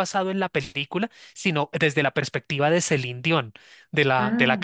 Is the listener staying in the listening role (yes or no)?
yes